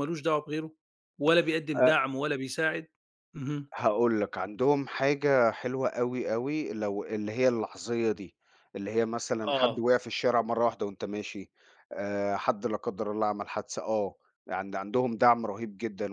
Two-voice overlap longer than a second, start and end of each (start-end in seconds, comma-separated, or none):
none